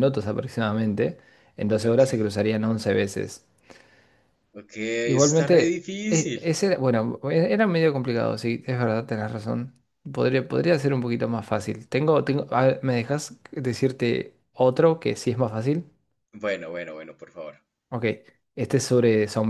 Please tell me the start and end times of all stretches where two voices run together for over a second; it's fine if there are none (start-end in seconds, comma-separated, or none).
5.0-6.5